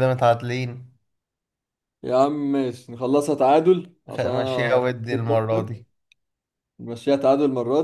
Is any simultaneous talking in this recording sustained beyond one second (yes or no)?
yes